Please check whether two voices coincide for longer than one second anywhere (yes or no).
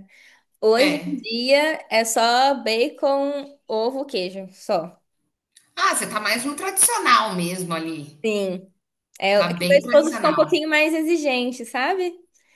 yes